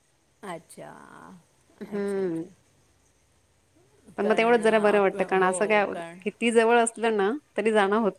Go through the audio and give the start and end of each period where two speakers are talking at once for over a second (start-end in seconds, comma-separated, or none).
4.2-5.5